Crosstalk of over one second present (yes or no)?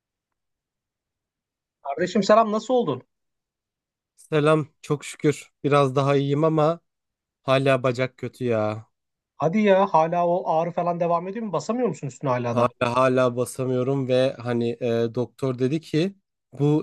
no